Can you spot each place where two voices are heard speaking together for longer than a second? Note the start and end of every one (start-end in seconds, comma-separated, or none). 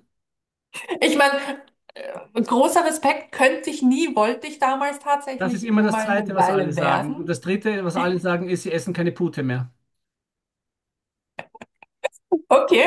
5.4-7.3